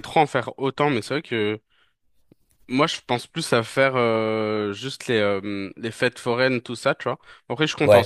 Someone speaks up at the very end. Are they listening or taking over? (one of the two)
listening